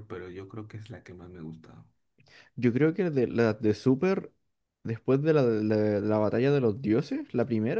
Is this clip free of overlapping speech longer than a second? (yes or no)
yes